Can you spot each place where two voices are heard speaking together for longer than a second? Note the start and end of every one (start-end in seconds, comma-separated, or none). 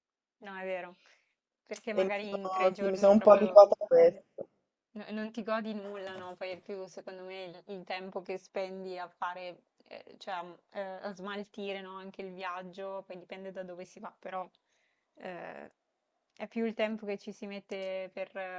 2.0-3.7